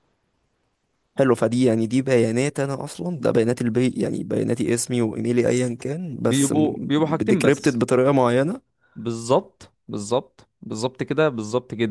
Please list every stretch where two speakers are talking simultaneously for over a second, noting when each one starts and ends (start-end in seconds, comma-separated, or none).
6.2-7.9